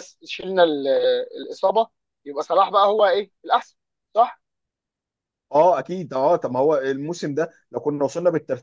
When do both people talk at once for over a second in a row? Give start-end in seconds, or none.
none